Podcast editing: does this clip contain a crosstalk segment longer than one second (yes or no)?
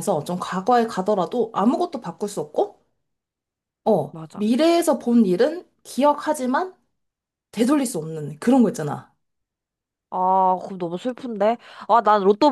no